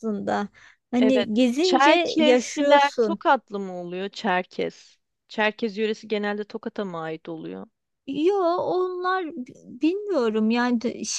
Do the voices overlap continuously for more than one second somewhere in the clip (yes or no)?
yes